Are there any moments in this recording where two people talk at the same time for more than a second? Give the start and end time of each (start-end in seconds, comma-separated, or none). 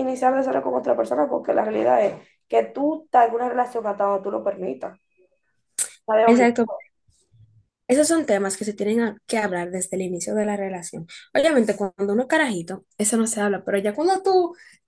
none